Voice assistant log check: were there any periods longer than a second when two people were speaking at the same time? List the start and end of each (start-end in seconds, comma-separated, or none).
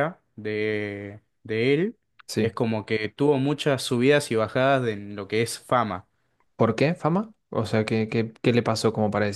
none